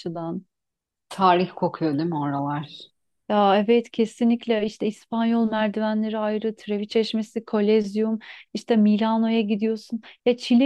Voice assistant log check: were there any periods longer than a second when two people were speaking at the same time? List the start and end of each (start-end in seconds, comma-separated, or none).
none